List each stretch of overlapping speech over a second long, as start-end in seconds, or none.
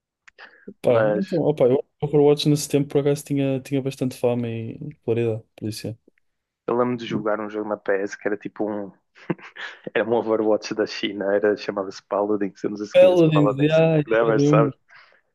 12.9-14.7